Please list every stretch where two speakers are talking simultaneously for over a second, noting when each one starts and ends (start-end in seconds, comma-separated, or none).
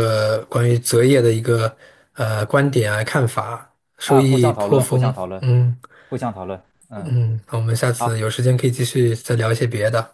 4.0-5.4